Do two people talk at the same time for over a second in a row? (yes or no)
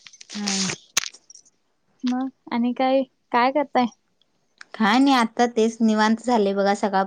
no